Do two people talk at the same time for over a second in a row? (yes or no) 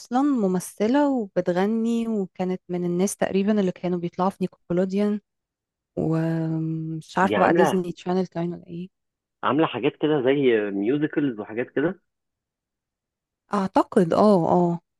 no